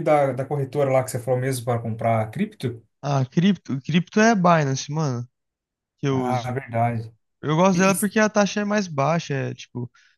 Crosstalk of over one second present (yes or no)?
no